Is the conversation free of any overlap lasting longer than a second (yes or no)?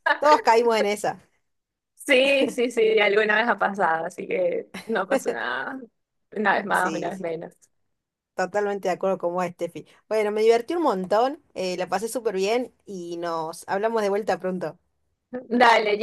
yes